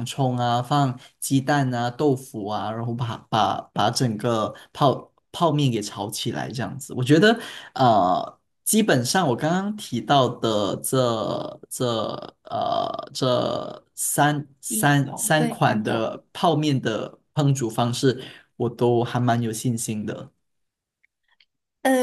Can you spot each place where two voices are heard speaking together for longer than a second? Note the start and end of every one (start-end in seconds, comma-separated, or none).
14.7-16.0